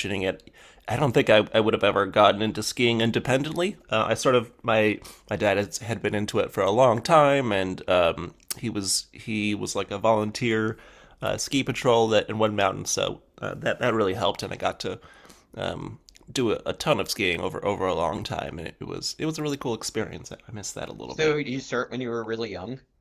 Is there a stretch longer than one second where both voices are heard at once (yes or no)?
no